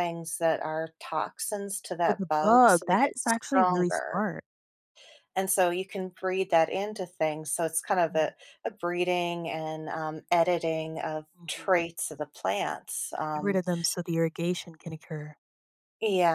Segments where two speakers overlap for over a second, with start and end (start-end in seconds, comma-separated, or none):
2.0-4.2